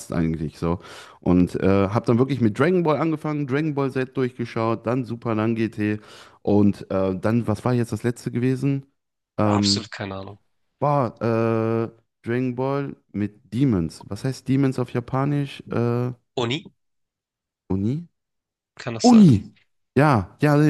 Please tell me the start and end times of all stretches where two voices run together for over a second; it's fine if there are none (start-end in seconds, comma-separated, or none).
none